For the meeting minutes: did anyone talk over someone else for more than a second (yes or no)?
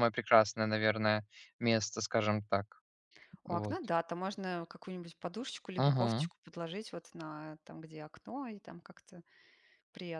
no